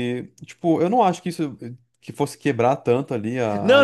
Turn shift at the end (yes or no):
yes